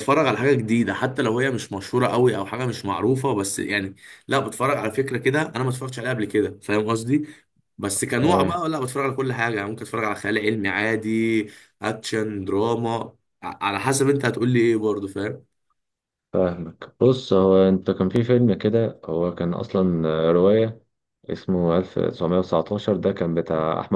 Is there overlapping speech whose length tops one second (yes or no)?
no